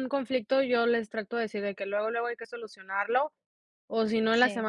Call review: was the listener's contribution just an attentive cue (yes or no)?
yes